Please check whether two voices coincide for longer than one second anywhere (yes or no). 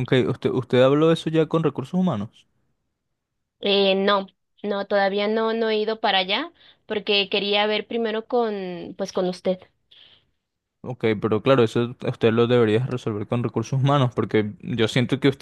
no